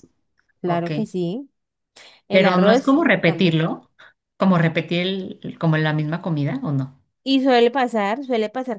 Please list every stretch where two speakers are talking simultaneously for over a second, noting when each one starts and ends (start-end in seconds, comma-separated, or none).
2.3-3.6